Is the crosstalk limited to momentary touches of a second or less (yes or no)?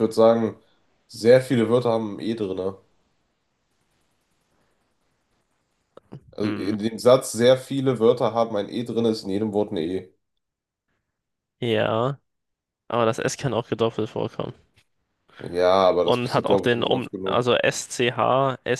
no